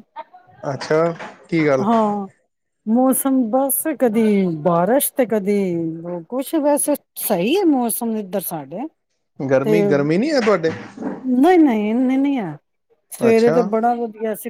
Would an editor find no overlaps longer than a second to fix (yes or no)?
yes